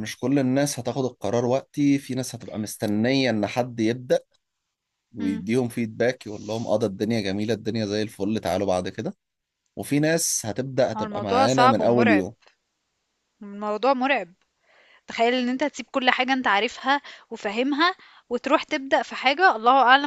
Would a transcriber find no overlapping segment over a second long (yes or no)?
no